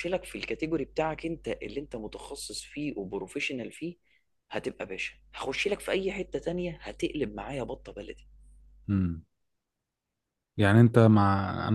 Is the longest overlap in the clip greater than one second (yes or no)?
no